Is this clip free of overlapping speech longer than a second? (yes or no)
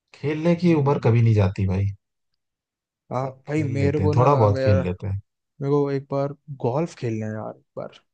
no